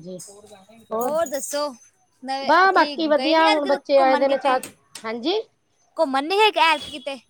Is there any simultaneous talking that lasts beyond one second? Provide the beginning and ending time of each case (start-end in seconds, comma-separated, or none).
2.5-4.6